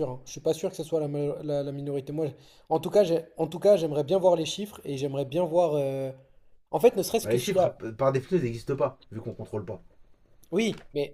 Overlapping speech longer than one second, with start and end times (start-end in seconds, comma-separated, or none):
none